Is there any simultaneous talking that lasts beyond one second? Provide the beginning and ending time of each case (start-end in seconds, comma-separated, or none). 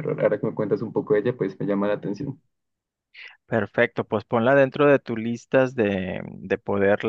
none